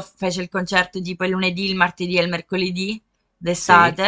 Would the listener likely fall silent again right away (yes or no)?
yes